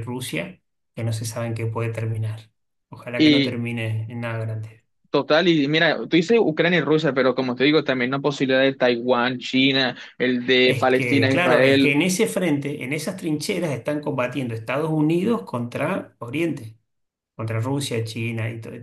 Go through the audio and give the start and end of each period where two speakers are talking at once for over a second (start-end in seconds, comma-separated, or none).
10.6-12.0